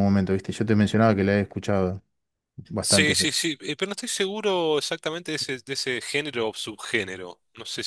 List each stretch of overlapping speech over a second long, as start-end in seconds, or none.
none